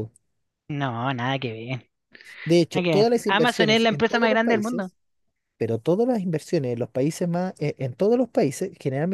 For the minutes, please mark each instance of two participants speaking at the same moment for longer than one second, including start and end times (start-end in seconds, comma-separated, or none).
2.7-4.9